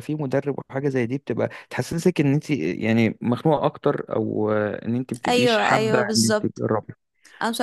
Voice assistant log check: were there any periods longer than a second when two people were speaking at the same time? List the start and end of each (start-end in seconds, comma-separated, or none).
5.3-6.6